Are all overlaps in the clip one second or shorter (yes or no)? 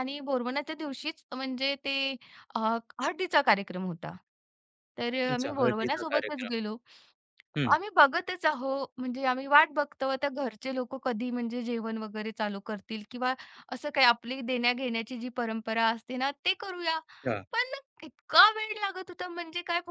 no